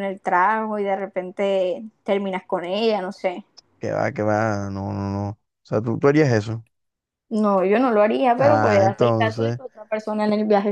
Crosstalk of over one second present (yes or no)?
yes